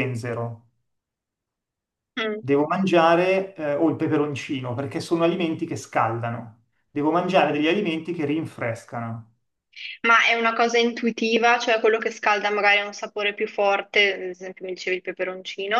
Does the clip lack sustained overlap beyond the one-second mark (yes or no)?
yes